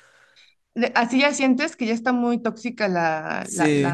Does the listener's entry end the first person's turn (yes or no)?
yes